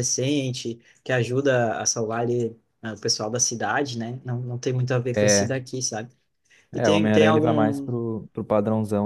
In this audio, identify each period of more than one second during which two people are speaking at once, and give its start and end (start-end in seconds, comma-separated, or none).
6.7-8.0